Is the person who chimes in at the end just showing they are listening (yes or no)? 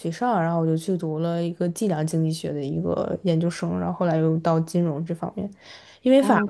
yes